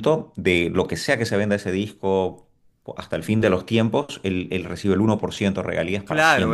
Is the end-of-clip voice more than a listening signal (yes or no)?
yes